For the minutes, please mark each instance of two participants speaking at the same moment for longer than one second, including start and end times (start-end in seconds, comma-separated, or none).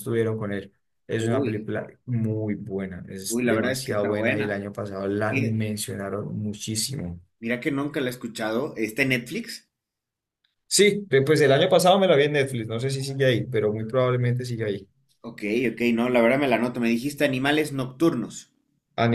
3.3-4.6